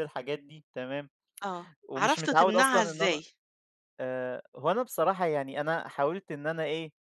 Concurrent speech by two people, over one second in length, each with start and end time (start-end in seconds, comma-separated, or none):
1.9-3.2